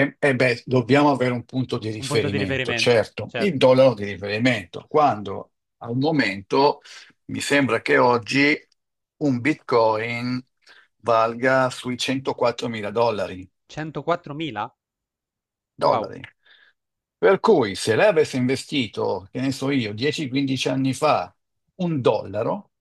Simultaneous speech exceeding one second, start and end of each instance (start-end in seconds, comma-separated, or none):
2.0-3.6